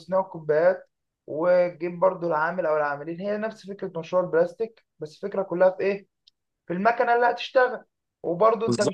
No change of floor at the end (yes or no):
yes